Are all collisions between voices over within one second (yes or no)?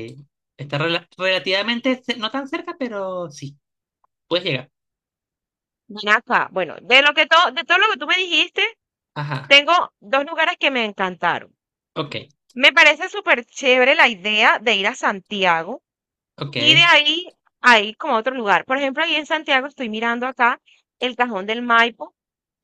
yes